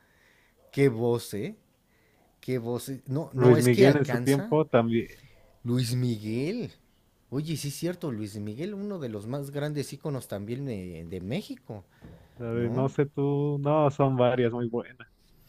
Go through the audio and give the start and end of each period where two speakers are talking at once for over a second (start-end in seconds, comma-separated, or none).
3.4-4.6